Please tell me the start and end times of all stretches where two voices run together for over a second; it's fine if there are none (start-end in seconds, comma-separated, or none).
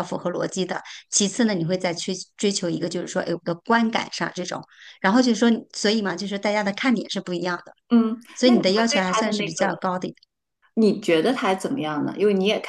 8.3-9.7